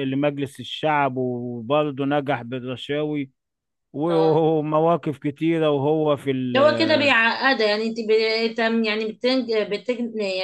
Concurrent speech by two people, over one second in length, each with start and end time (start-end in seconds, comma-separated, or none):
none